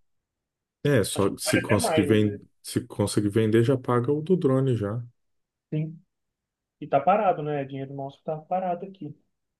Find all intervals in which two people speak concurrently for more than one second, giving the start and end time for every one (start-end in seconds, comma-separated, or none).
1.1-2.5